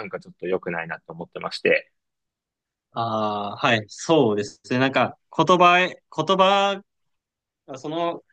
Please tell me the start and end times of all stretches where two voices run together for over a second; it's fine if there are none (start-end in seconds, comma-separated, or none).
none